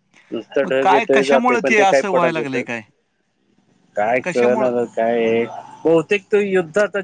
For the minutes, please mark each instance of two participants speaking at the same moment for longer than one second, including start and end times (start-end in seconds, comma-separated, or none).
0.6-2.6